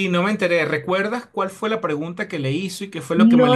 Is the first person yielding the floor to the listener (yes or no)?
yes